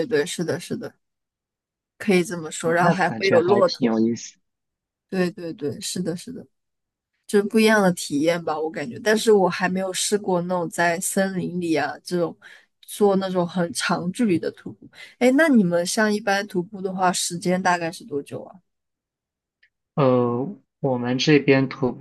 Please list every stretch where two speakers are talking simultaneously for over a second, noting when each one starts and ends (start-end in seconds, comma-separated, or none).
2.6-3.9